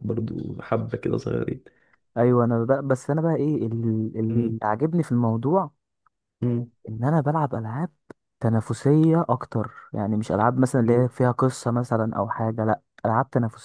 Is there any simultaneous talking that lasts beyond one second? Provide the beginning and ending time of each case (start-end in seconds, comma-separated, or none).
none